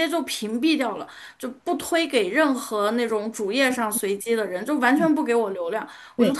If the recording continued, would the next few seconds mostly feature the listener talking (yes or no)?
no